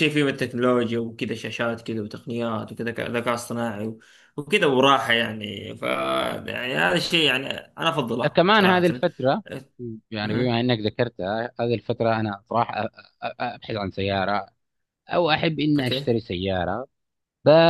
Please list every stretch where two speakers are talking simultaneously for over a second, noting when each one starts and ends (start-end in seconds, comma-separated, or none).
none